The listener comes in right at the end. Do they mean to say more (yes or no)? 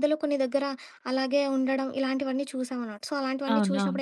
no